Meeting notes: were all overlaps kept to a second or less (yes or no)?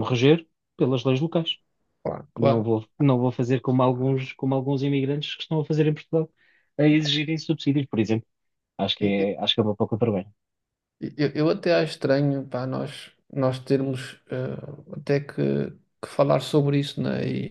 yes